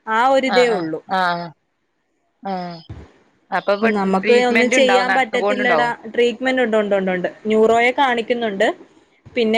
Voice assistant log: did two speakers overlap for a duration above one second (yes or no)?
yes